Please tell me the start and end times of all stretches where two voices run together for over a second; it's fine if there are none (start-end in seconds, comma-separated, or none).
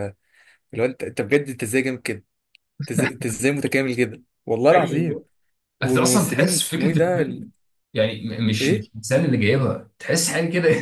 5.8-7.5